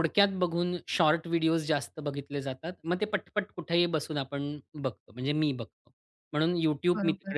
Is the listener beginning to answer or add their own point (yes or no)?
no